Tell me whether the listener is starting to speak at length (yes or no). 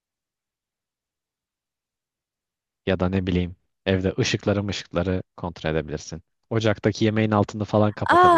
yes